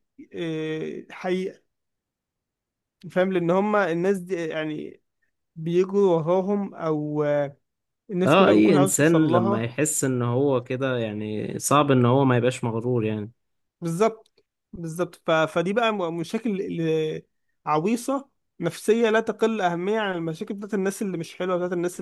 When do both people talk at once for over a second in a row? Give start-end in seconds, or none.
8.3-9.7